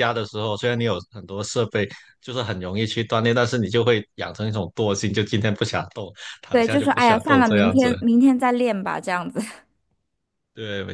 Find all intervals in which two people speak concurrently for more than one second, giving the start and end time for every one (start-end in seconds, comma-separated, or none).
6.5-7.9